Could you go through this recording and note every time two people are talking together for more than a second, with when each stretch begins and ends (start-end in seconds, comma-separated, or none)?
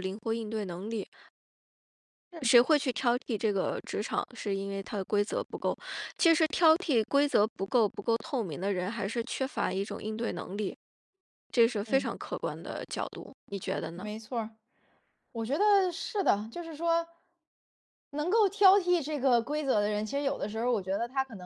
none